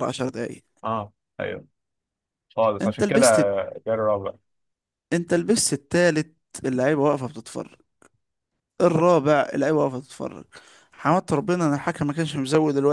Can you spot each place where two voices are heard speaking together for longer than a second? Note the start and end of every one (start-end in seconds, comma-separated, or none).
none